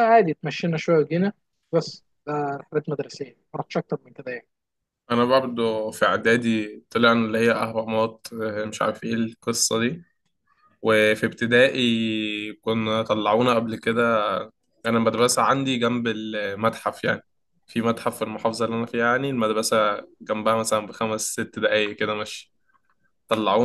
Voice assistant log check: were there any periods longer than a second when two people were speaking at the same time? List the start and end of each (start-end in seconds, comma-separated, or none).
none